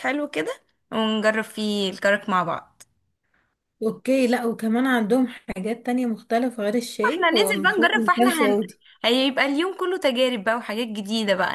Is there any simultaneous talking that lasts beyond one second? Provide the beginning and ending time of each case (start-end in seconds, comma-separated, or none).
7.1-8.6